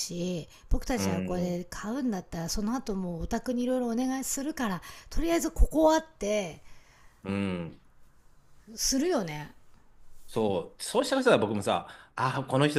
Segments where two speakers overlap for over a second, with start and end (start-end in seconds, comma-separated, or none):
none